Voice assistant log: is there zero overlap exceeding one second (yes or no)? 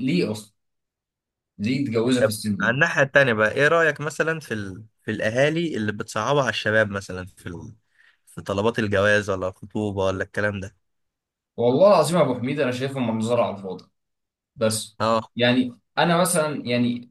yes